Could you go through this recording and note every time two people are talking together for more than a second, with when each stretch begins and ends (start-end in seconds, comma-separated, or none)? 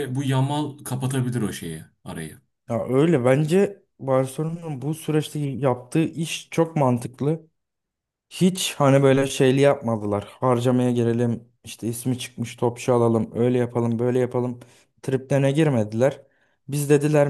none